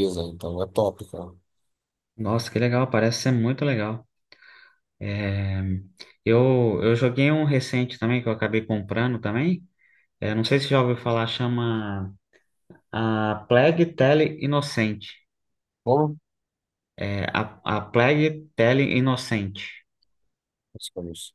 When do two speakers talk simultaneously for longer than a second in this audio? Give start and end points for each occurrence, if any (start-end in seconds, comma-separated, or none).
none